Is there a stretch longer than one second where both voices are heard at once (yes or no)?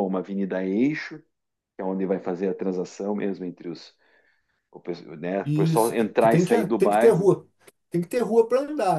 yes